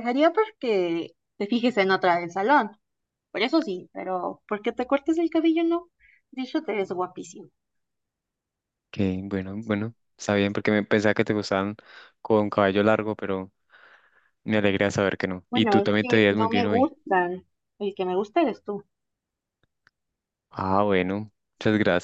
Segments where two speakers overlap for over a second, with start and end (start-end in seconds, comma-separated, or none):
15.5-16.9